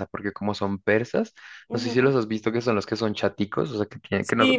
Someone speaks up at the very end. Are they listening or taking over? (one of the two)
taking over